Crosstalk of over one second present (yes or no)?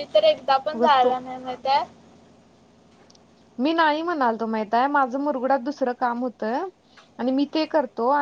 no